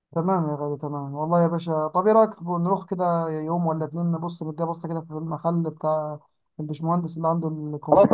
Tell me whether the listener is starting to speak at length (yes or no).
yes